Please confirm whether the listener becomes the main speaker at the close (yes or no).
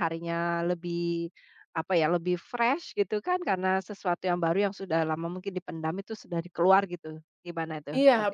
yes